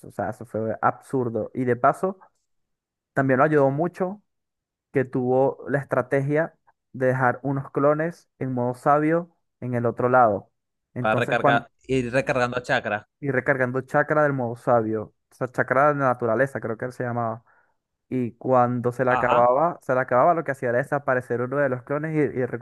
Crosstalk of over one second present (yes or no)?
no